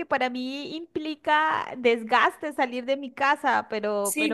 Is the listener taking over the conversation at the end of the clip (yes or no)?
yes